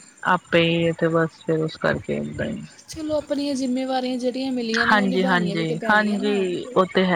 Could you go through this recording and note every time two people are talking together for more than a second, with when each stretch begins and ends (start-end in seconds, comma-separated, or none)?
4.9-6.4